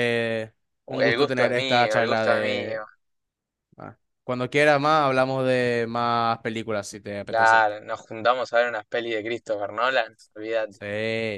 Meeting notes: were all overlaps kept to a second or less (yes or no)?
no